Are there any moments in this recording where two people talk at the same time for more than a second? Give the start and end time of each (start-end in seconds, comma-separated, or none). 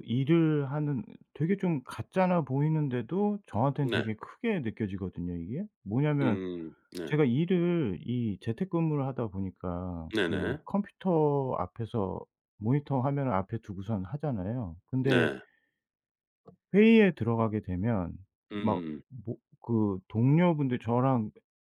none